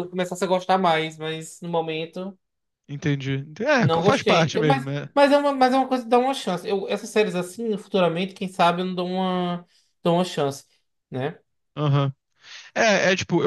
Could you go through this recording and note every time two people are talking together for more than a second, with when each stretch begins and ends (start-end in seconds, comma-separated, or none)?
3.8-5.1